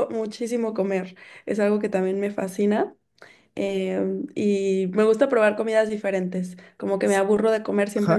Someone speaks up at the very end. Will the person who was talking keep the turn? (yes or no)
no